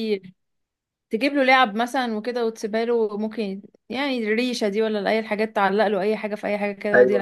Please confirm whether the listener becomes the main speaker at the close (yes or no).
yes